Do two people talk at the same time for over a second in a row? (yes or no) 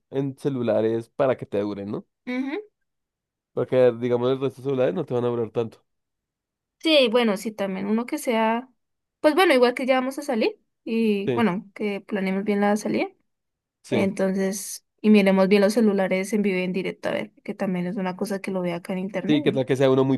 no